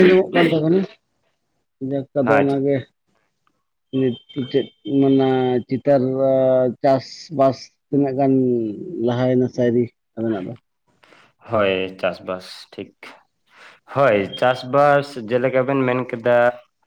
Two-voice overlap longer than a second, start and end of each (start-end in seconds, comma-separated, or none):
none